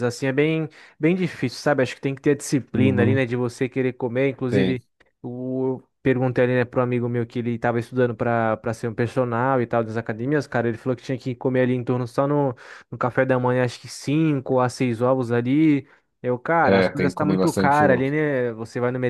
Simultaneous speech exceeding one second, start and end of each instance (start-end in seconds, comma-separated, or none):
16.6-18.1